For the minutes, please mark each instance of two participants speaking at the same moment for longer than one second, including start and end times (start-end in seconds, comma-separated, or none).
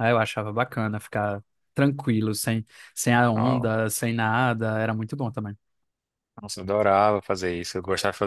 none